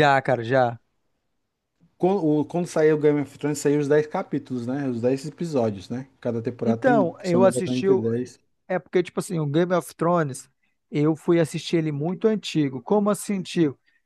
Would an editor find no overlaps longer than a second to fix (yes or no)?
no